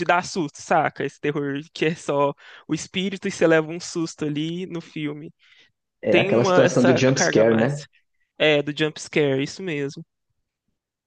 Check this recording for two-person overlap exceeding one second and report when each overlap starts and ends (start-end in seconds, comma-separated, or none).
6.1-7.8